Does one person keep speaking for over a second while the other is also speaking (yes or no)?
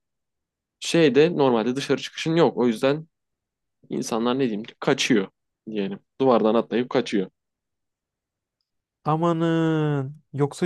no